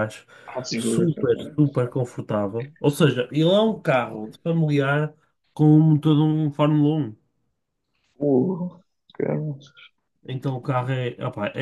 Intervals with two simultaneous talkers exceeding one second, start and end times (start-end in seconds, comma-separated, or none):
none